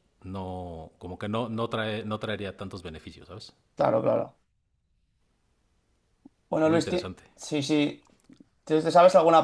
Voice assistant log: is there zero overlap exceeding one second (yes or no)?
yes